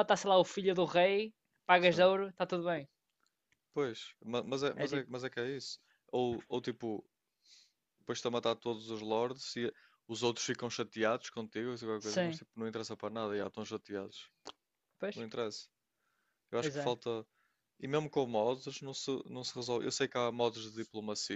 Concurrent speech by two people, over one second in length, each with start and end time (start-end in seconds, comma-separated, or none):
none